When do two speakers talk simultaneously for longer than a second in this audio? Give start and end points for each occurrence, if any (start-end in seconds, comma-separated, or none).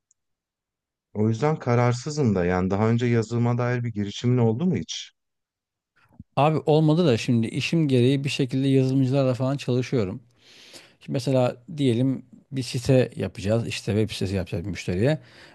none